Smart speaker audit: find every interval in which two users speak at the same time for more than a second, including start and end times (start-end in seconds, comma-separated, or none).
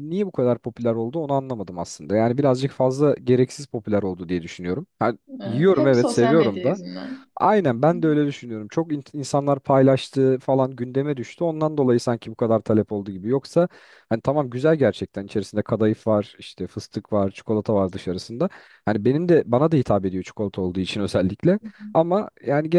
5.4-6.8